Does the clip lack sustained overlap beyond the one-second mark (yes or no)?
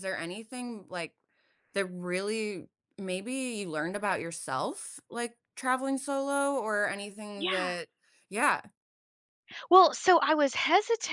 yes